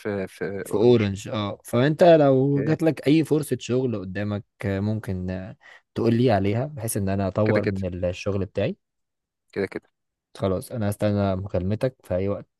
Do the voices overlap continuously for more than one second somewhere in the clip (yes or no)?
no